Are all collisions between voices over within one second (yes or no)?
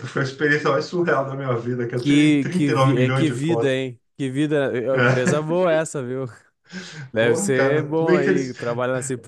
no